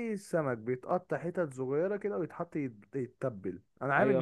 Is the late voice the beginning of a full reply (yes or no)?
no